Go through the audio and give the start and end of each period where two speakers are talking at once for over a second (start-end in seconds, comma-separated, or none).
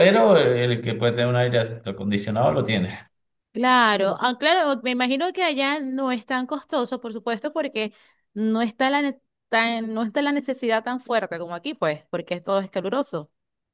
none